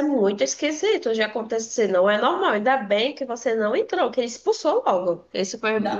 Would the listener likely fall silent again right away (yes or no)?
no